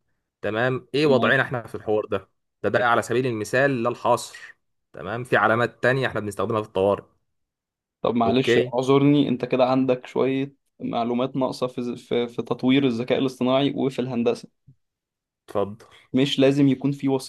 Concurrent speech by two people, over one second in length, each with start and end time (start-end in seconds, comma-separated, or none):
none